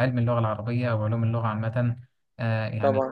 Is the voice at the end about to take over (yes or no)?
no